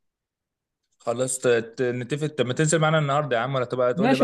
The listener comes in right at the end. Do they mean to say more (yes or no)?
yes